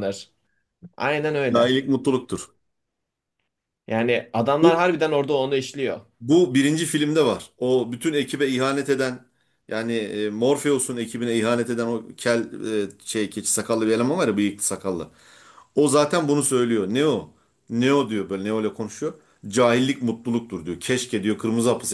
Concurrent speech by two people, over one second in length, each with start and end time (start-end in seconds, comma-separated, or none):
none